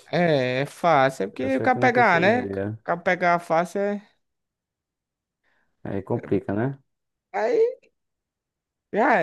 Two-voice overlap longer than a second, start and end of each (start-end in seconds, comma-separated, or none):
1.4-2.8